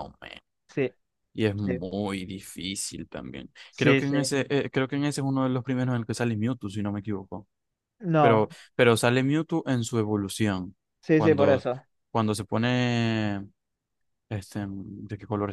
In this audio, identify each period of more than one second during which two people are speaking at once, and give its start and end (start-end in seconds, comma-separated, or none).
none